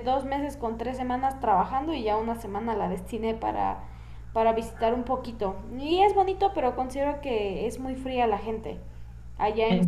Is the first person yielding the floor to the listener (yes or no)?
no